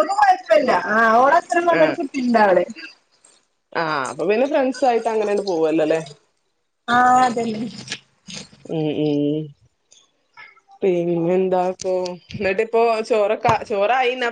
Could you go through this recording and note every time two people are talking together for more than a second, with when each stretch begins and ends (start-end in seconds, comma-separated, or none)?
none